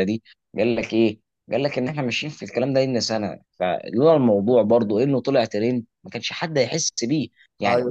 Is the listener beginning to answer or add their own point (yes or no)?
no